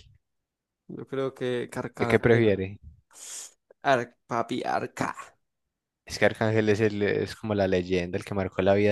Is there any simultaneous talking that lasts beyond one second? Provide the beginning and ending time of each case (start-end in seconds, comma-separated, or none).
none